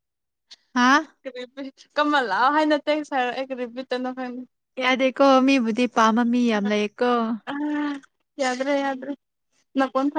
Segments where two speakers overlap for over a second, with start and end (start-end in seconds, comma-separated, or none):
none